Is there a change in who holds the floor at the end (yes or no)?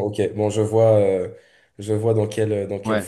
yes